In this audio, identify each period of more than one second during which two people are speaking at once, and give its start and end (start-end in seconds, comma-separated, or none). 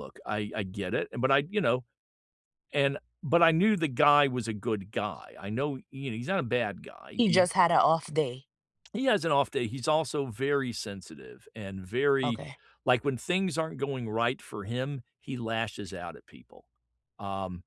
none